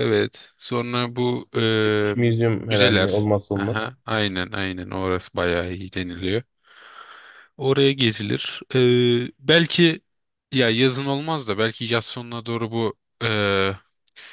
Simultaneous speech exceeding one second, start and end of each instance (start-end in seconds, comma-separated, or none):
1.8-3.8